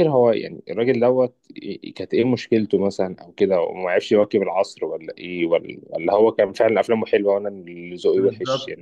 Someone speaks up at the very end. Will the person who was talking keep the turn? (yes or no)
no